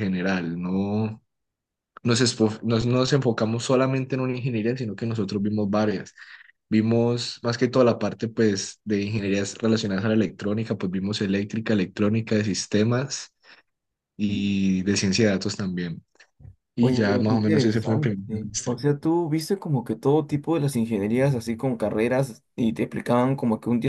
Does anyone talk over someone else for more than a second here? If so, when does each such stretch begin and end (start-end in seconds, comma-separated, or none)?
16.8-18.8